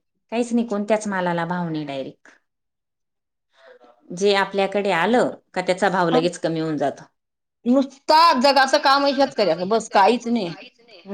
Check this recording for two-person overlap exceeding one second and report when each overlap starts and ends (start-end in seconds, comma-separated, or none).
8.2-10.5